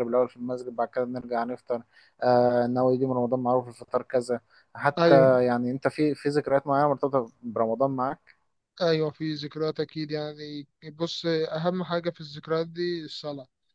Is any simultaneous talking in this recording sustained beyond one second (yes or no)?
no